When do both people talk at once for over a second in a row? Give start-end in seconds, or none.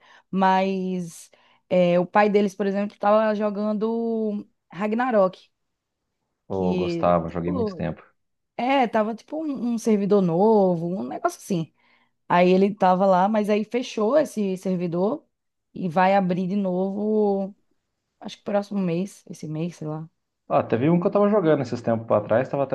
6.5-7.9